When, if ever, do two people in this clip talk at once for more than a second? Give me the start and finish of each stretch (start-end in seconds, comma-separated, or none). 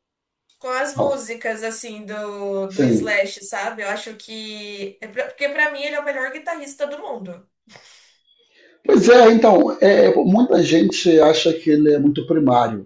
none